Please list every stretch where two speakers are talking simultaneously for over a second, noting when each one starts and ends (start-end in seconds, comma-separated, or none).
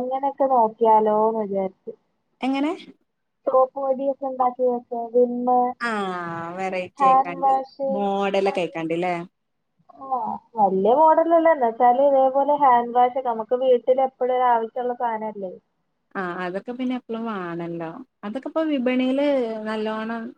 none